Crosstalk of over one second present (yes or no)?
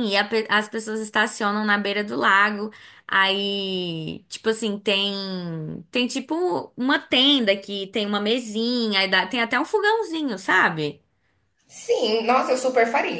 no